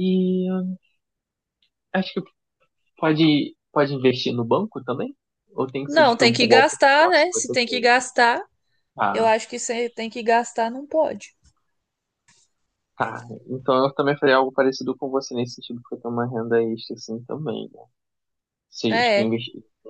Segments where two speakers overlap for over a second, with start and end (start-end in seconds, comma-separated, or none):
5.9-7.9